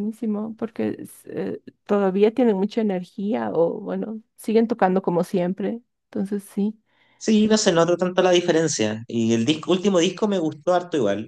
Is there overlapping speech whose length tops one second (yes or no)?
no